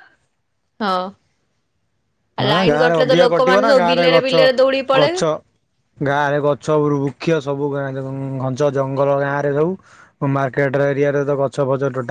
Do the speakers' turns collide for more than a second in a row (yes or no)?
yes